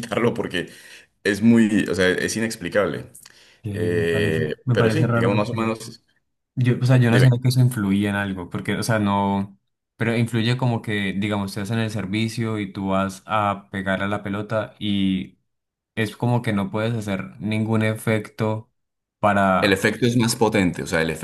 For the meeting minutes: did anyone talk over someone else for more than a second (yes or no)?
yes